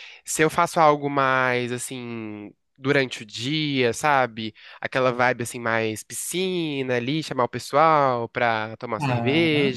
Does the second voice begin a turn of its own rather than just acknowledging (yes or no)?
no